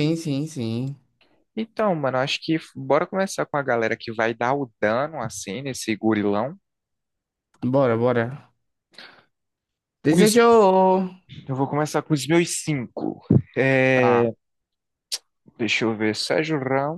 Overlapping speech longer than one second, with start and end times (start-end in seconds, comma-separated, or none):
none